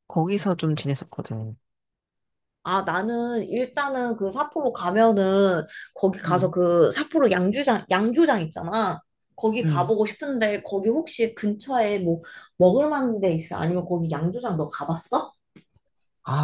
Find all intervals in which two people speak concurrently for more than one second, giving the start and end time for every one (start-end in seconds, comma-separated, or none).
none